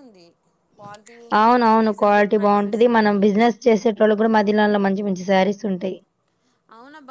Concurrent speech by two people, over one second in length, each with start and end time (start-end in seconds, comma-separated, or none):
1.4-3.2